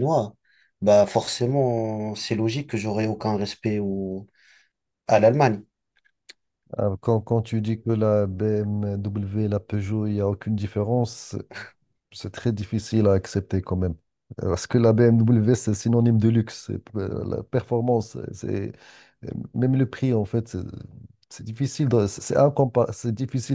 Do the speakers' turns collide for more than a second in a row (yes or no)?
no